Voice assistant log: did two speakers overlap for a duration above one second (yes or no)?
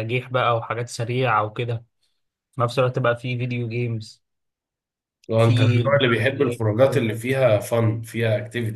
yes